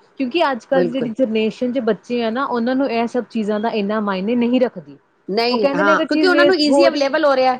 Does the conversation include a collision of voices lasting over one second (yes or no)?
yes